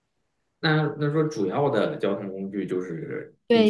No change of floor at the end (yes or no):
no